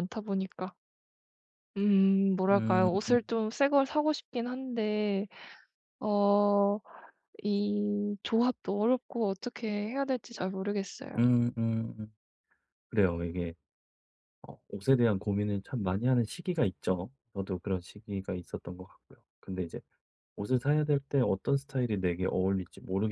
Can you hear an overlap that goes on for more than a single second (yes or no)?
no